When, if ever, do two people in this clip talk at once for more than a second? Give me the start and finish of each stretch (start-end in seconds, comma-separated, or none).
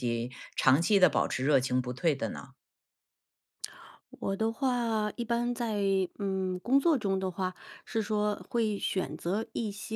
none